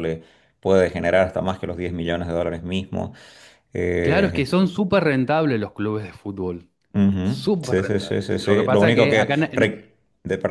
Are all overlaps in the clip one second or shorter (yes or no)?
no